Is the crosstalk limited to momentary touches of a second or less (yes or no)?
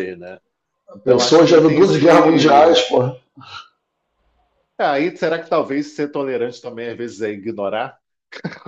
no